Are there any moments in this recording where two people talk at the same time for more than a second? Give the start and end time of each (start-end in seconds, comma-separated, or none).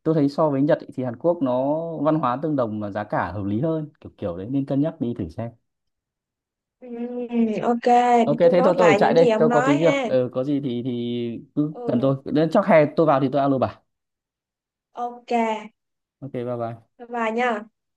8.4-10.1